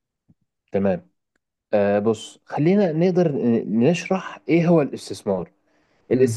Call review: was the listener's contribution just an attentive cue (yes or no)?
yes